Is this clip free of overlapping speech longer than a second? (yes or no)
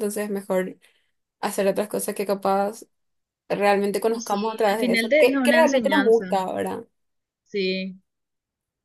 no